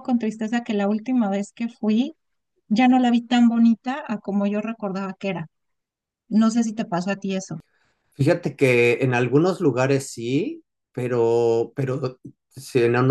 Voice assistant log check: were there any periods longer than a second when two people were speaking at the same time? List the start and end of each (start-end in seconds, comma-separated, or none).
none